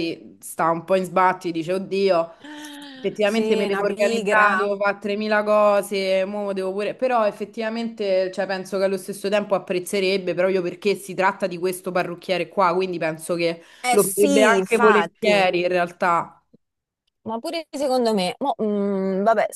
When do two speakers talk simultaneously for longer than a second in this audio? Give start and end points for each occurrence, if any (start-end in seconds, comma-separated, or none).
3.2-4.7, 13.8-15.5